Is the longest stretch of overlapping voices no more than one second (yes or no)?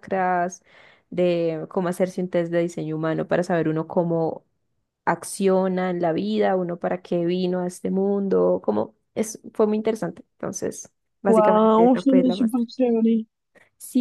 no